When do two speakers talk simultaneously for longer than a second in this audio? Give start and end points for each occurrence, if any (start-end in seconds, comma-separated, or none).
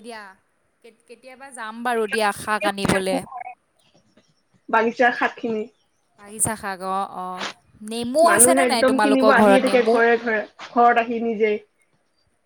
8.3-9.9